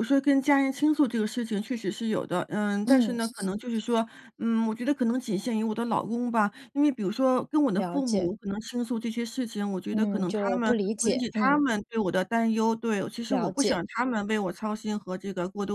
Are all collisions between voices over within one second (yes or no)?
no